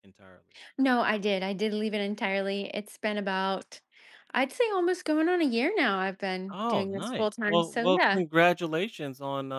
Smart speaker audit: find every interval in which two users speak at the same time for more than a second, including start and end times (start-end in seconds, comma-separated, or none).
6.5-8.2